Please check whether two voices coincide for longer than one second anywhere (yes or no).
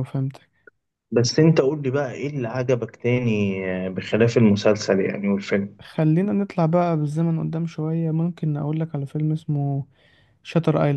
no